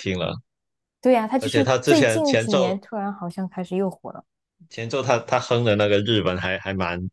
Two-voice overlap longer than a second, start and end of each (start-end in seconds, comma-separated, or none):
1.4-2.8